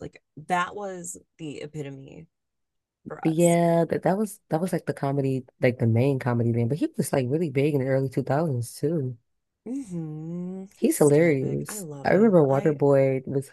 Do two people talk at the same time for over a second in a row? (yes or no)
yes